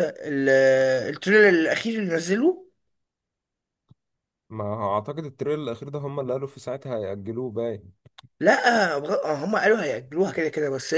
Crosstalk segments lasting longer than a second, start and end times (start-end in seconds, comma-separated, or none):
none